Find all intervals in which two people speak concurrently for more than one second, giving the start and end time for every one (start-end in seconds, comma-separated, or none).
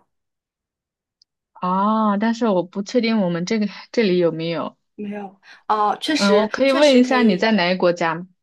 6.2-7.5